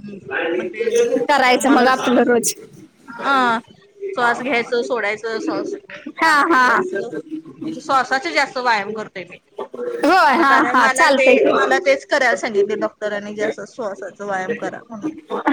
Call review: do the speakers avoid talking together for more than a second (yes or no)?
no